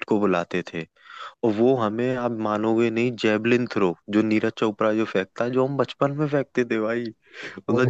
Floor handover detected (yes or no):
no